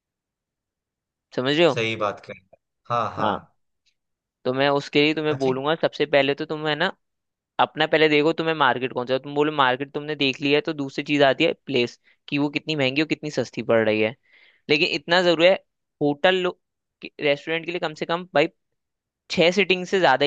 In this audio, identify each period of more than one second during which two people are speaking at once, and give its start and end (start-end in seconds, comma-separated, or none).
none